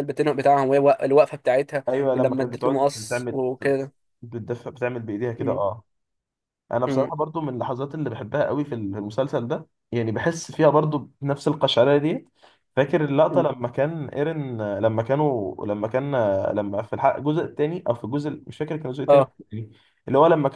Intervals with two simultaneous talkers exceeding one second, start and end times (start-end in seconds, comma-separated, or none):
1.9-3.4